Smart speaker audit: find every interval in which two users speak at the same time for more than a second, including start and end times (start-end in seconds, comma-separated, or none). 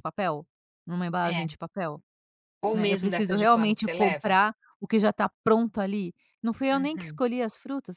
2.7-4.4